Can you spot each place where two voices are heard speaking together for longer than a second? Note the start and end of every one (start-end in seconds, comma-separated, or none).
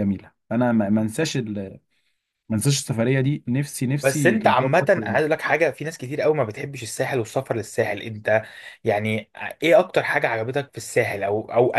4.0-5.2